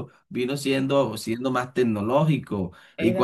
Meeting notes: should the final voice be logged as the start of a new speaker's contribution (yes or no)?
no